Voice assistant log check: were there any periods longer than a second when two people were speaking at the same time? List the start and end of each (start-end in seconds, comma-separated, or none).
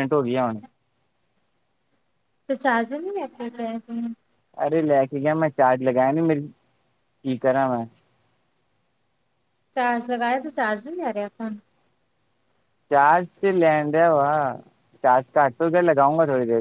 none